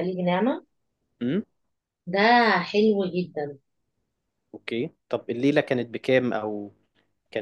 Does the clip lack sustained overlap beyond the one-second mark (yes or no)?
yes